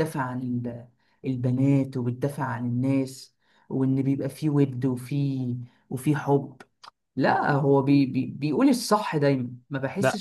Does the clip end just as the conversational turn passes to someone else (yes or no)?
yes